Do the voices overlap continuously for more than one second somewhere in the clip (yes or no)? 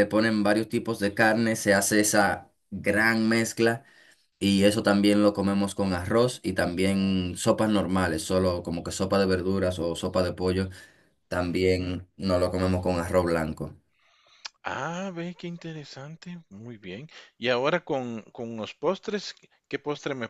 no